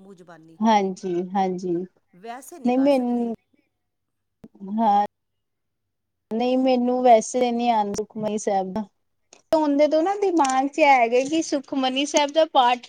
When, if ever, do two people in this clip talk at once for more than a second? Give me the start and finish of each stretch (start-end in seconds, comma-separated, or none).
none